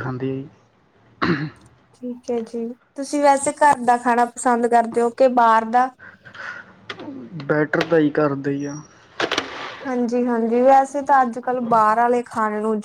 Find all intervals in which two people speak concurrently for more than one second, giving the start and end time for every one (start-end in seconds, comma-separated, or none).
none